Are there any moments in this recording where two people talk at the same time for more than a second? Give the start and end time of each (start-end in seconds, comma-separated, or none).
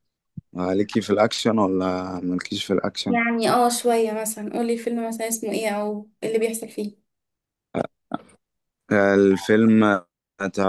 none